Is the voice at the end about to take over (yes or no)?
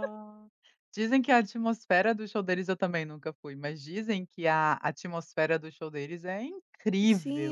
yes